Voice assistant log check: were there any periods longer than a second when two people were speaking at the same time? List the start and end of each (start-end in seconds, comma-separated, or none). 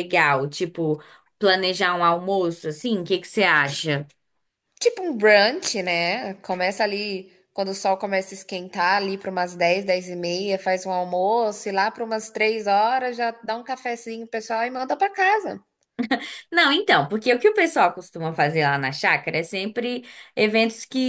none